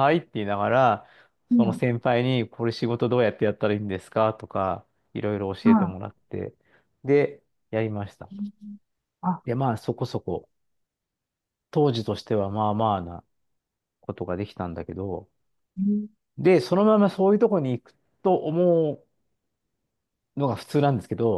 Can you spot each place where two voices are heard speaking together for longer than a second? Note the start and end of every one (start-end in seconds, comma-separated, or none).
none